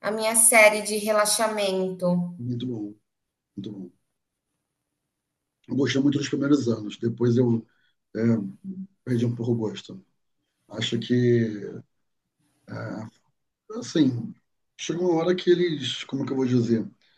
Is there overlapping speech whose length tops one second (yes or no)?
no